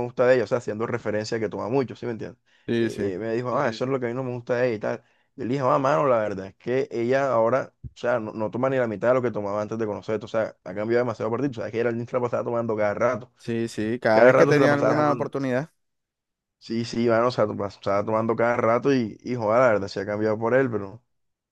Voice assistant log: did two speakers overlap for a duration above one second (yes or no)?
yes